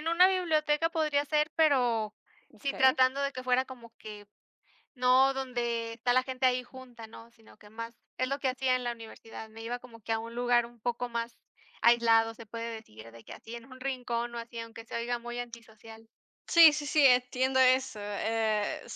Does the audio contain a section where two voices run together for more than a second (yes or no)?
no